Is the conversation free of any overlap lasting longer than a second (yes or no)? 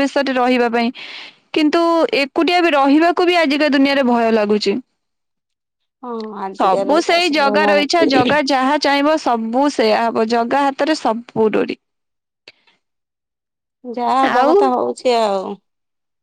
no